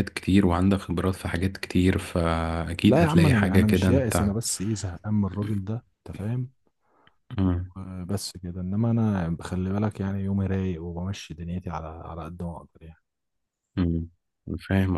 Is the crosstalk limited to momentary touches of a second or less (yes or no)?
no